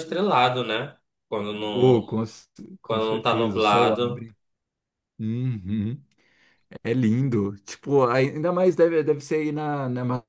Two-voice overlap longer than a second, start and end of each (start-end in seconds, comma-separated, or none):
2.9-4.3